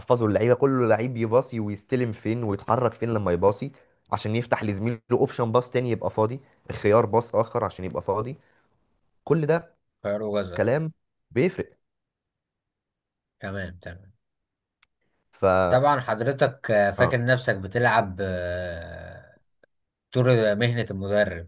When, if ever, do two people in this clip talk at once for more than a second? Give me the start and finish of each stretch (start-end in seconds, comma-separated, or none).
none